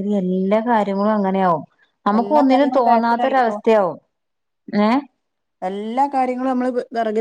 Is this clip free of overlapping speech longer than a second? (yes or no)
no